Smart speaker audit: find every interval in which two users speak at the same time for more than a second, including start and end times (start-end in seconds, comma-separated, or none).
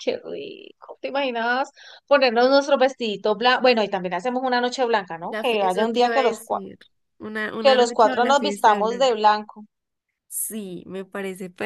5.2-6.6, 7.6-9.2